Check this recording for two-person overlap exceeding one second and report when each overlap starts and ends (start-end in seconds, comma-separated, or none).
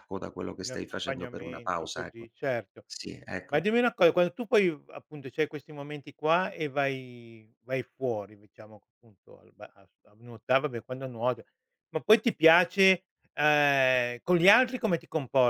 0.6-2.3